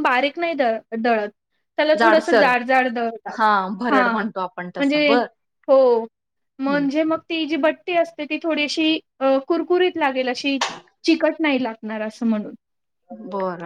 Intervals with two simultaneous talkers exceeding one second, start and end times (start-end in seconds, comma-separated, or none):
3.9-5.1